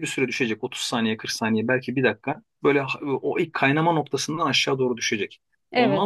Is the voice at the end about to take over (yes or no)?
no